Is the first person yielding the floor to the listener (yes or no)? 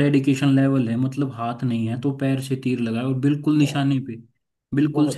yes